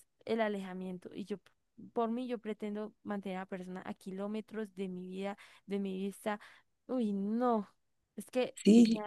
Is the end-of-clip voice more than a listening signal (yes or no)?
yes